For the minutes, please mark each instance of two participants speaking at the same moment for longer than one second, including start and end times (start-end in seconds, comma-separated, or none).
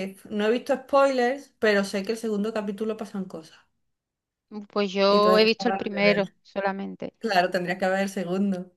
5.1-6.3